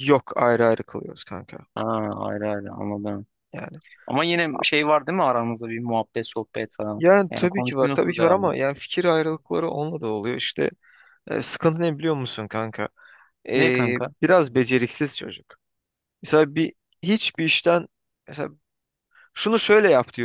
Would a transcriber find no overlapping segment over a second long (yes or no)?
no